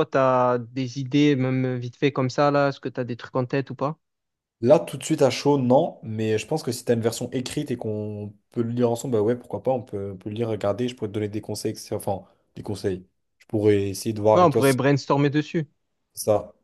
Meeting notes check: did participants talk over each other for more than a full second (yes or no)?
no